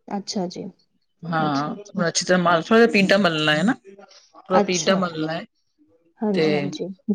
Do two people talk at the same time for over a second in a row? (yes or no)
no